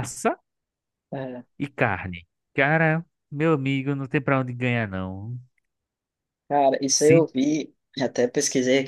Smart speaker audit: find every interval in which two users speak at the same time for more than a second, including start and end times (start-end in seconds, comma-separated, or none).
none